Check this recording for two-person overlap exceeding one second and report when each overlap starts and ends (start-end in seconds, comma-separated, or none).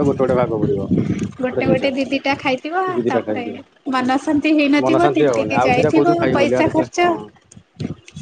4.9-7.1